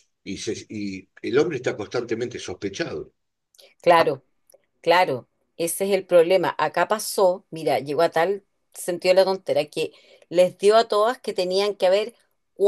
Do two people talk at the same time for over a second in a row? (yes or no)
no